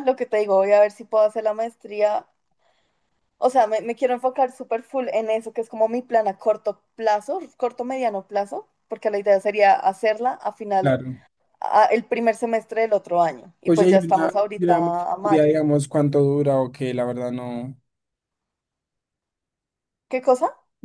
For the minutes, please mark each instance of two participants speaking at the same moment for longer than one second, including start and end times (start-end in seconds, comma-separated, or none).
13.6-15.5